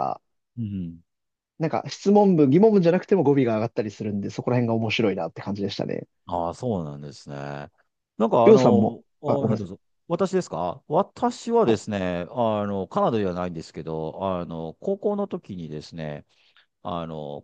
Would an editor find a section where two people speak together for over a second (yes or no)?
yes